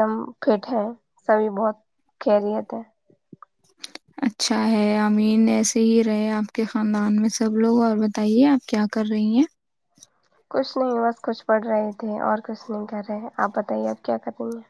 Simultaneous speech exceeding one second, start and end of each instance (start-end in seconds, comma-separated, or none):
none